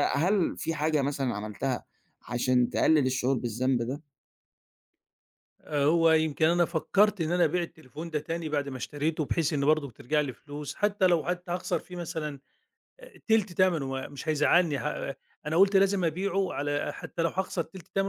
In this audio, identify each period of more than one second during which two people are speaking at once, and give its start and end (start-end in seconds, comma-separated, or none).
none